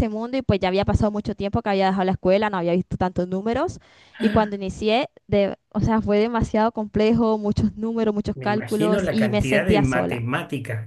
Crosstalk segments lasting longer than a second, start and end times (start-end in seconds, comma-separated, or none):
8.3-10.2